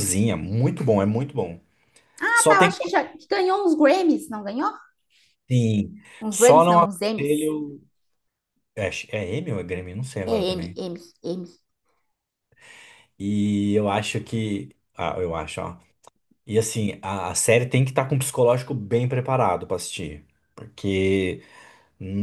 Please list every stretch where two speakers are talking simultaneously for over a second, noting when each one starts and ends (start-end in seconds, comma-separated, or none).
6.2-7.5